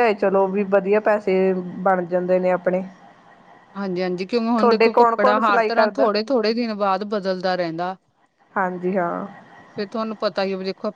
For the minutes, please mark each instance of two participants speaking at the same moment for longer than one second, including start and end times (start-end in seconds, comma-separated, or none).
4.6-6.1